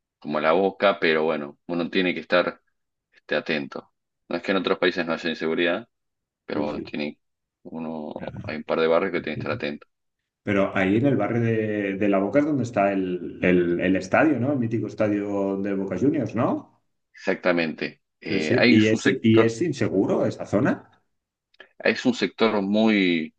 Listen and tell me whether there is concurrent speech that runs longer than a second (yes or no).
yes